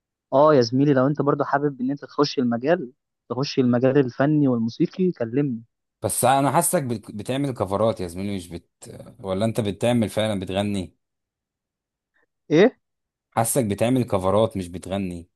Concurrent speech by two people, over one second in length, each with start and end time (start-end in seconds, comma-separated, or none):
none